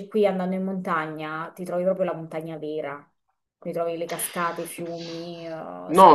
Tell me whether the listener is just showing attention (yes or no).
no